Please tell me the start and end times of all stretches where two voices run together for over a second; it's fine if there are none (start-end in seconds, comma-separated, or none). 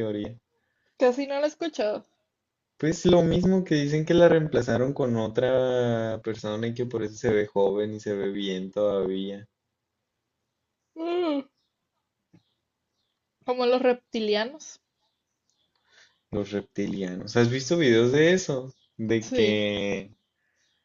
none